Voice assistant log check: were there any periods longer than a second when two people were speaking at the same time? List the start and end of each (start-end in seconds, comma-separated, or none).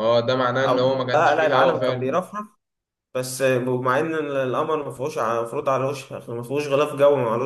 0.6-2.2